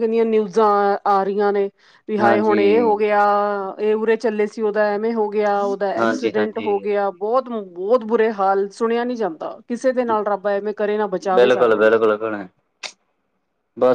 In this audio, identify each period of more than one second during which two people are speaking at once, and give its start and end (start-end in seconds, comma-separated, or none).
none